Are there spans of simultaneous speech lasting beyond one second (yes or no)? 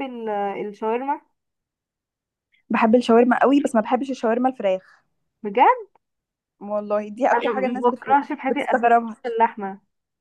yes